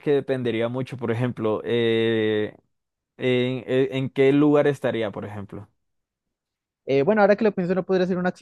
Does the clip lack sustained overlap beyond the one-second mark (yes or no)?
yes